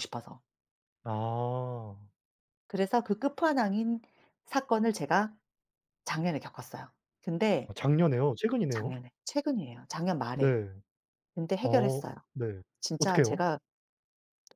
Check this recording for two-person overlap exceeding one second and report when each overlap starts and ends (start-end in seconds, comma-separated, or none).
none